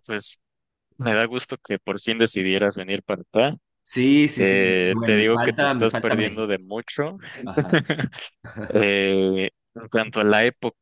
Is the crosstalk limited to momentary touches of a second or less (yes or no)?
no